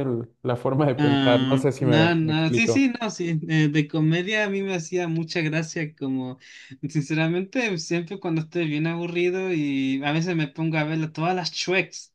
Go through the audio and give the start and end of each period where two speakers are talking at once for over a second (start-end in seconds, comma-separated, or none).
0.9-2.9